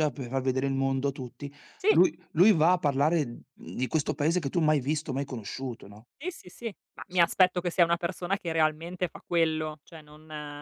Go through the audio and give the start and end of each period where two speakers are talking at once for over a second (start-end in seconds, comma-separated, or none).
none